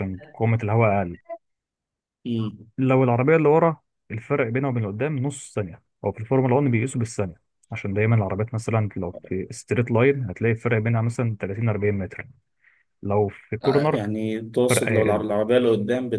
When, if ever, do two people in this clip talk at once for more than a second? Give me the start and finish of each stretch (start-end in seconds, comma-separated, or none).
none